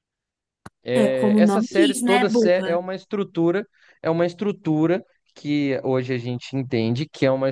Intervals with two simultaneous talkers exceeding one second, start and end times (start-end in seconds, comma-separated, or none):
0.9-2.8